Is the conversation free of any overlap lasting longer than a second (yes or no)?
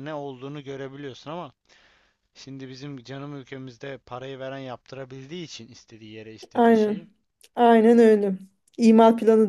yes